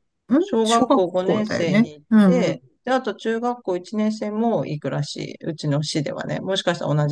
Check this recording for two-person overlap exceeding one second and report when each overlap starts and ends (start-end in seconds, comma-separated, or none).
0.6-2.7